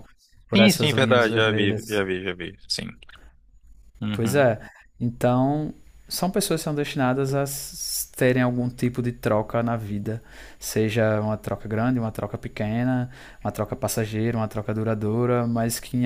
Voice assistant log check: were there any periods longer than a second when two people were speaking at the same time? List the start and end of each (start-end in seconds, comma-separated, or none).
0.5-2.0